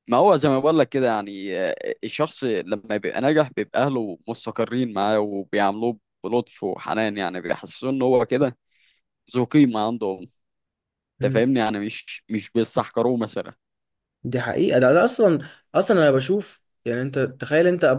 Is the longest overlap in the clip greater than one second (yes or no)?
no